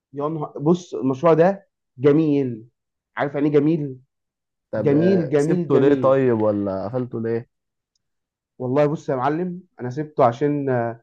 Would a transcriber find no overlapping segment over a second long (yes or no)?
no